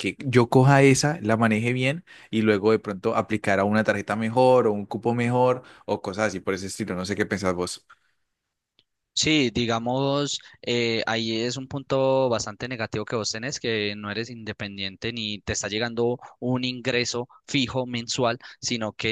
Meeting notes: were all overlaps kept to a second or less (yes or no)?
yes